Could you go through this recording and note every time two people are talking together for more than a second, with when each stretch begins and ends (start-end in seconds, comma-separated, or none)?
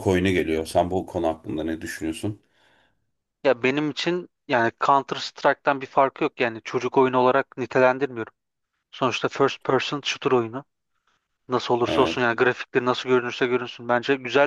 none